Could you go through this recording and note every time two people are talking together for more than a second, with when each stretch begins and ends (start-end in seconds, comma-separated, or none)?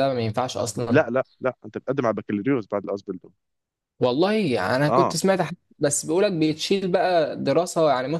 none